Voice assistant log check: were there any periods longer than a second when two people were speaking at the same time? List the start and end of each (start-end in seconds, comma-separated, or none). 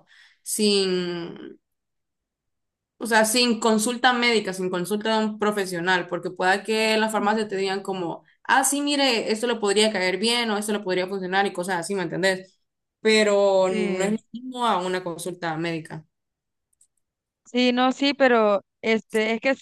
none